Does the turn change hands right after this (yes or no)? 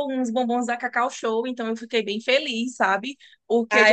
yes